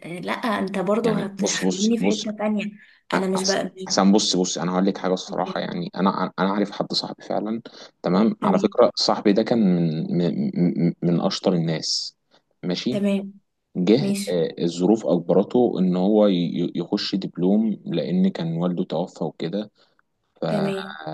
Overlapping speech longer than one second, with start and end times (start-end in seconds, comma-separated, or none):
1.0-2.3